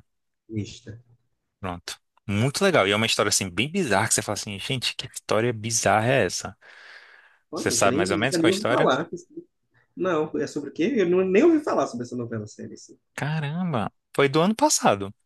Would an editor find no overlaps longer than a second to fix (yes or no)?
no